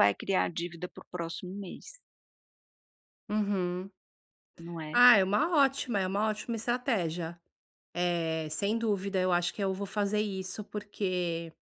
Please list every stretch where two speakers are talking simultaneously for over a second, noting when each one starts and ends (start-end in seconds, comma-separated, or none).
none